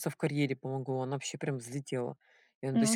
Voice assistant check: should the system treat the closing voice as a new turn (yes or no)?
no